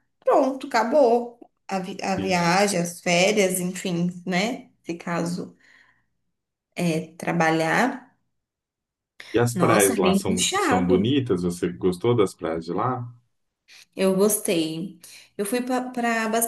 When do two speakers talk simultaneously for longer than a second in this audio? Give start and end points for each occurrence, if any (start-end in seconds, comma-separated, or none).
9.5-11.2